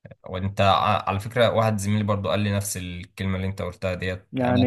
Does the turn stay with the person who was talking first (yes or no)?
yes